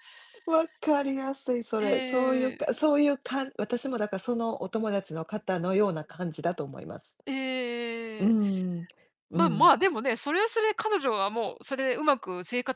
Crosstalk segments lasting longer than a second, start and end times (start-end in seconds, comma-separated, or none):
none